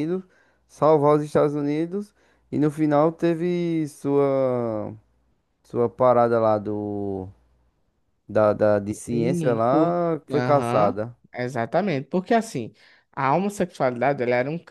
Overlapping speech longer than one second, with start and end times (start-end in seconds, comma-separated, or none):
9.1-10.9